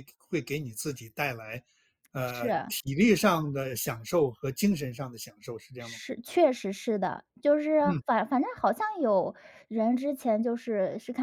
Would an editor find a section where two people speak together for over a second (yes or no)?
no